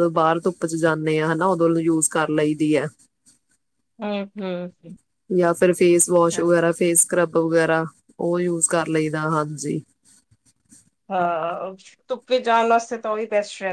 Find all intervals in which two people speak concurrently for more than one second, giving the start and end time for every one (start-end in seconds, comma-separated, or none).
none